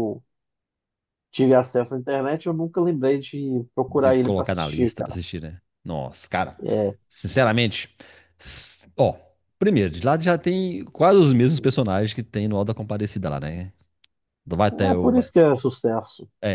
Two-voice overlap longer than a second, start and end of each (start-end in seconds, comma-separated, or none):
3.9-5.2